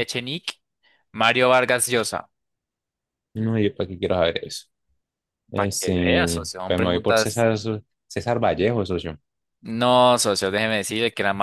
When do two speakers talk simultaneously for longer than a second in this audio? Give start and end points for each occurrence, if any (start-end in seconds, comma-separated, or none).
5.5-7.5